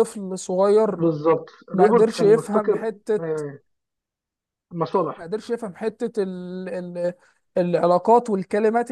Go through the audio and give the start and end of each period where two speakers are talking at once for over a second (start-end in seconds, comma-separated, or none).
1.7-3.4